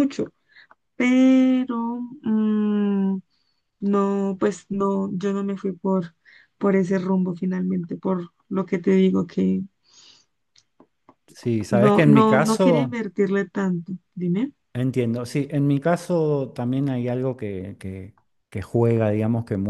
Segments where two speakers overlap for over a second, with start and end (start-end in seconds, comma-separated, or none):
11.7-13.0